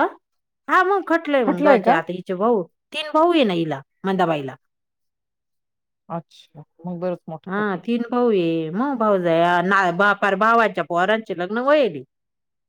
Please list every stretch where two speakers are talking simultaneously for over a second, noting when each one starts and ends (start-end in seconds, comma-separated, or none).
none